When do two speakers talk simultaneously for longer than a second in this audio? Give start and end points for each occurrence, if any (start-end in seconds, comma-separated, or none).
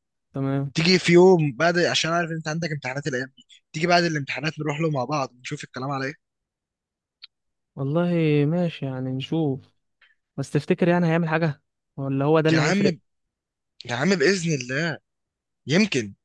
none